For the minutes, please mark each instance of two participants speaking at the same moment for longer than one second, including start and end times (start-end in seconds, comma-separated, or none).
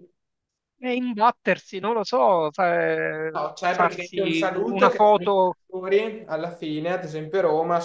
3.3-5.6